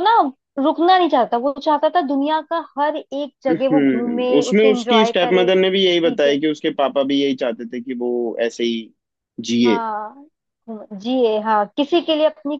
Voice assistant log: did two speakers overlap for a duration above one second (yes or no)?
yes